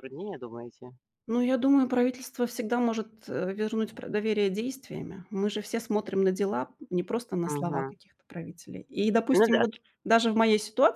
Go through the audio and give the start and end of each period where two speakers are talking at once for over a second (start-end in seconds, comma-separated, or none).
none